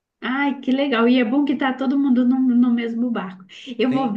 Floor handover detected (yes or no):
no